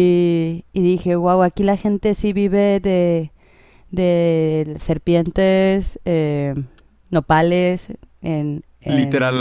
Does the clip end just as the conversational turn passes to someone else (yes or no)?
yes